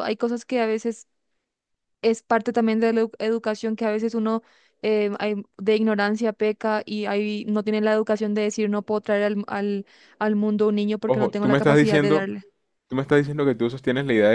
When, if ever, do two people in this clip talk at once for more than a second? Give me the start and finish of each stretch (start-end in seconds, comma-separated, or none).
11.1-12.3